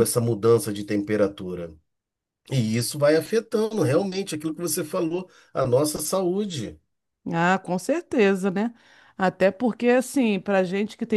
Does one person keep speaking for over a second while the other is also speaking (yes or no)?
no